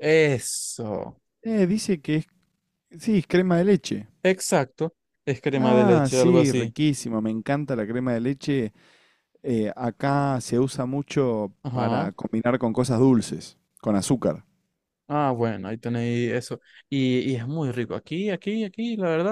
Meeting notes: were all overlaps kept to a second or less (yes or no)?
no